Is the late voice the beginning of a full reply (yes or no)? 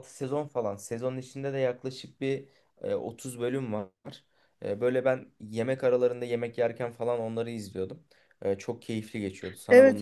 yes